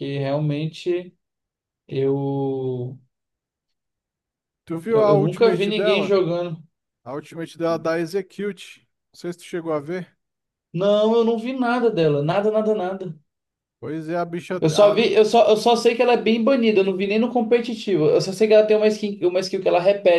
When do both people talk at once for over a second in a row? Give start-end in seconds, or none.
4.9-6.2